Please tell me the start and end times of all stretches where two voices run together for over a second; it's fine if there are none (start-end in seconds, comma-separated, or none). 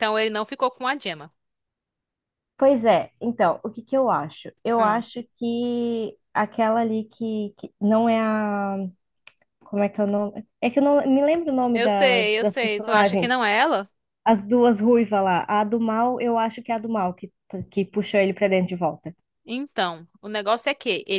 11.7-13.4